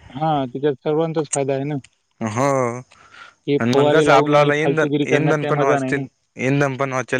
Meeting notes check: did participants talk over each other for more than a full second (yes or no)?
yes